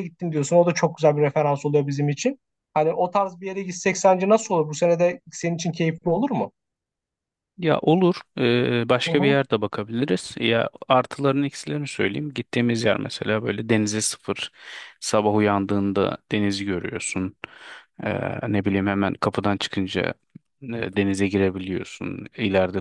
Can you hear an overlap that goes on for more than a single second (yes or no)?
no